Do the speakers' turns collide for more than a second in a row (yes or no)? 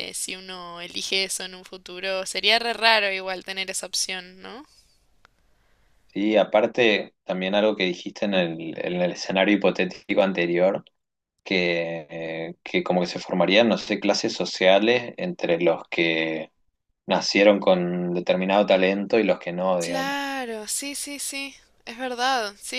no